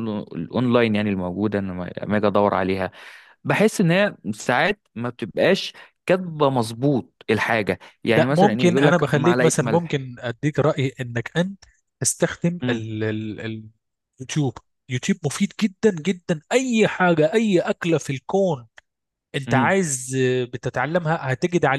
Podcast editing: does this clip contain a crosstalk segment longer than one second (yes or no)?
yes